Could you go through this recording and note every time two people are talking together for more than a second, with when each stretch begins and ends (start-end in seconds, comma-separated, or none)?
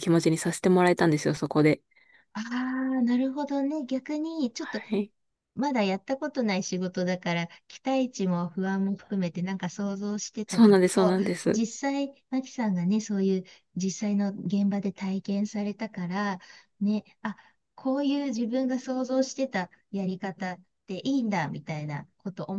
none